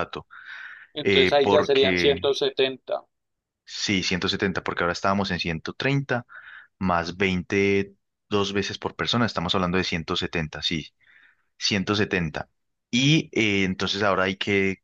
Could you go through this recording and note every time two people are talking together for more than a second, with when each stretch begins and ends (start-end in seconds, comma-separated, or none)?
1.0-2.2